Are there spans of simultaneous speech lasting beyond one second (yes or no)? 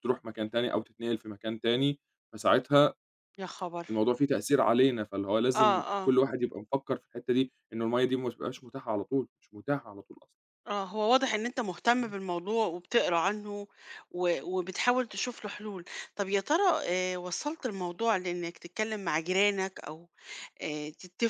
no